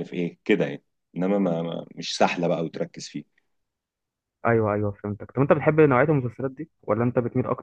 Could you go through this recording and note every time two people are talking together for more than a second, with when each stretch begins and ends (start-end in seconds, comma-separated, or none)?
none